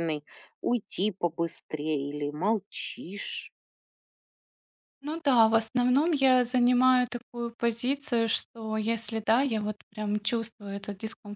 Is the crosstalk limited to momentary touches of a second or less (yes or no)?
yes